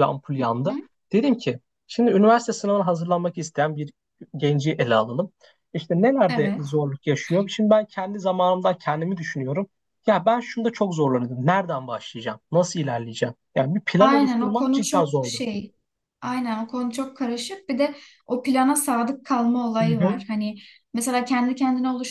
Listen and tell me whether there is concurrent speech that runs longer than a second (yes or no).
yes